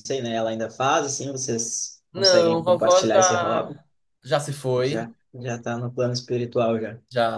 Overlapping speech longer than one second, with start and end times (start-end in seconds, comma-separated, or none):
2.1-3.8